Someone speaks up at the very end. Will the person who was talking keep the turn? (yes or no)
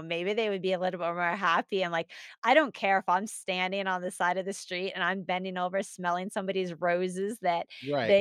yes